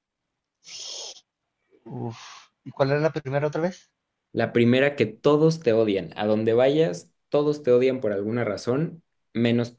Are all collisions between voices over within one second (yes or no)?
yes